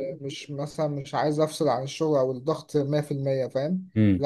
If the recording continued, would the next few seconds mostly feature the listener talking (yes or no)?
no